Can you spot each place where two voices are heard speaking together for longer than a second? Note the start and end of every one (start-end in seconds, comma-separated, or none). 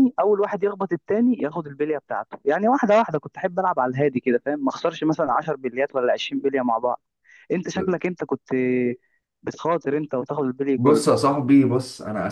none